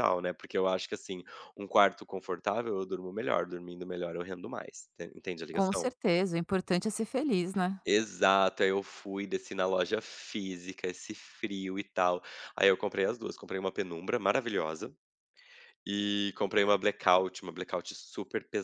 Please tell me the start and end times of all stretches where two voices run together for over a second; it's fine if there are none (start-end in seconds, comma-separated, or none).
none